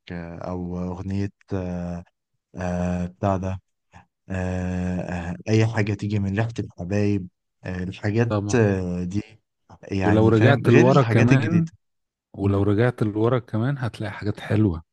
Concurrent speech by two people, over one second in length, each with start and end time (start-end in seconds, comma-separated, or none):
10.1-11.7